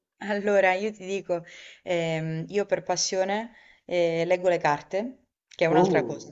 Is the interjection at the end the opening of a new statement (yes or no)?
no